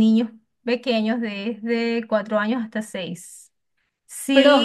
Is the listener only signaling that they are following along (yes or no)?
yes